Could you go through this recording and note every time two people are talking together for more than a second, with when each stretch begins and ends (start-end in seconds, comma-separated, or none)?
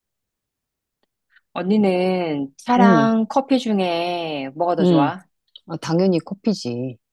none